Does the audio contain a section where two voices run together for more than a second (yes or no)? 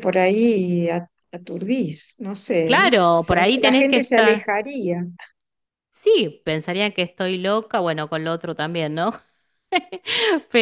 yes